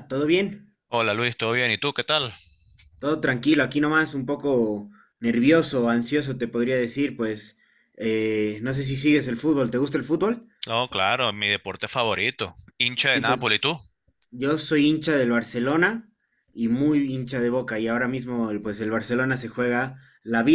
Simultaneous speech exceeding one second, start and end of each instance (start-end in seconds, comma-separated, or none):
none